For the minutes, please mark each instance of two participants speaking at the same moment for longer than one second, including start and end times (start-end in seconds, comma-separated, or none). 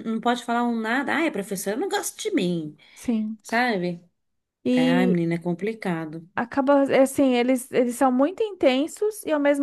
none